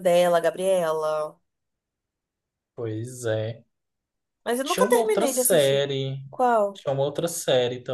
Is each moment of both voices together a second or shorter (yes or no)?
no